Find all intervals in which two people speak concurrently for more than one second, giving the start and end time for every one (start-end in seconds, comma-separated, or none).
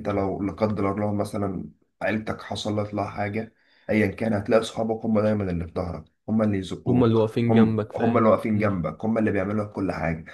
6.9-8.8